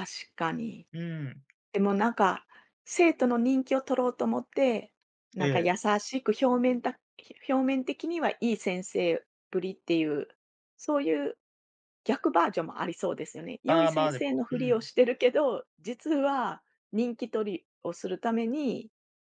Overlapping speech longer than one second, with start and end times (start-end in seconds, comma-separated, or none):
13.7-14.9